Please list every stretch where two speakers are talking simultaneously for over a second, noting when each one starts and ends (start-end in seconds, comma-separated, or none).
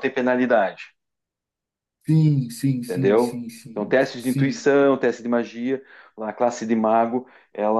2.8-4.7